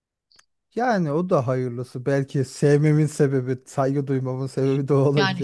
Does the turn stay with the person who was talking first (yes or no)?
no